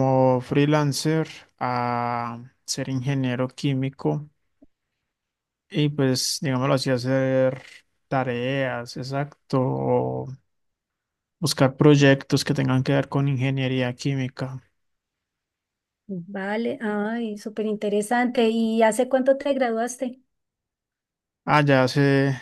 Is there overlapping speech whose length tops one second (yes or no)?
no